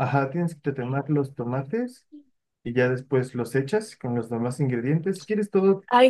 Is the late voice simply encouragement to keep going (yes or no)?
no